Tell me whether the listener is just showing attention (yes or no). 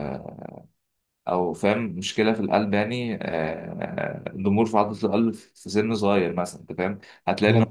yes